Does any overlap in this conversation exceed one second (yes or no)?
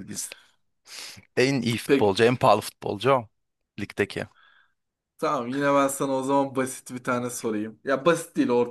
no